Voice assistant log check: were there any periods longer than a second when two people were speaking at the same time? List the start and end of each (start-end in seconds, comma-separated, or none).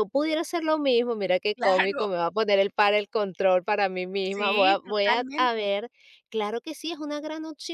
4.2-5.6